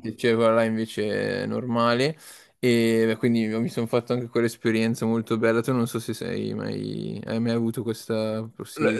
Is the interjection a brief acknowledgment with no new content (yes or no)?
no